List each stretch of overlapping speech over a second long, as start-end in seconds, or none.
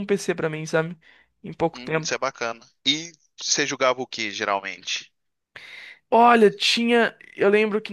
none